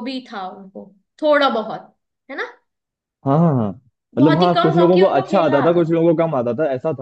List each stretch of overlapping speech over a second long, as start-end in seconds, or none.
4.2-6.0